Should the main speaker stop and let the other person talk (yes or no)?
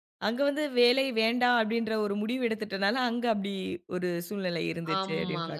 yes